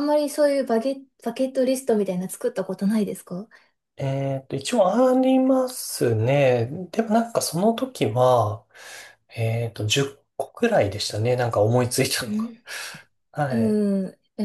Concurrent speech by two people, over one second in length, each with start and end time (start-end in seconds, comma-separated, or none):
none